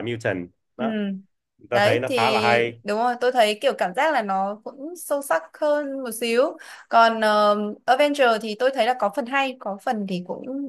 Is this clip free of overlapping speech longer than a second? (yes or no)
yes